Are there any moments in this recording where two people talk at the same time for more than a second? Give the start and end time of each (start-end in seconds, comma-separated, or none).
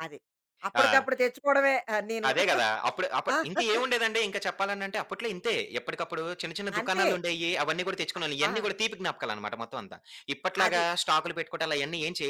none